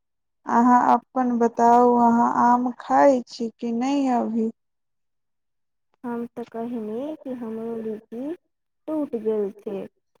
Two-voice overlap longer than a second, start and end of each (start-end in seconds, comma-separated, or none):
none